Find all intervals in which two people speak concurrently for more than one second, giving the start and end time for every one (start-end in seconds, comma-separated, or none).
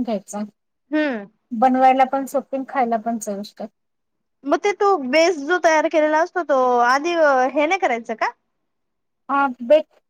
none